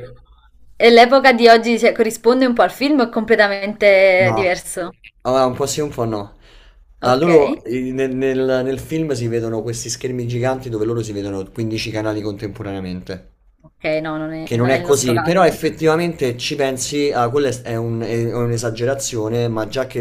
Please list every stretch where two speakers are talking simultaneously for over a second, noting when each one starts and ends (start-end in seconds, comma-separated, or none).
14.4-15.9